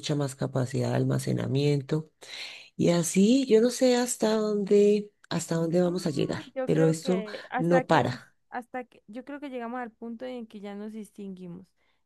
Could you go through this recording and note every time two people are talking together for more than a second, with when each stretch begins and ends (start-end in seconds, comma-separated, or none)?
5.8-8.3